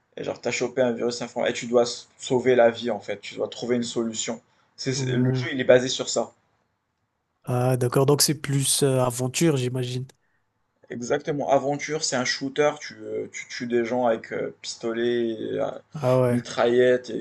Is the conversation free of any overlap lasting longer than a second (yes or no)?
yes